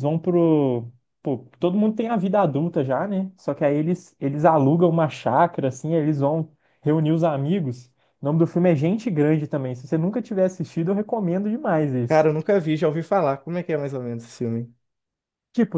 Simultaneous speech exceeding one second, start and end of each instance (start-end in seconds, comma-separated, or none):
none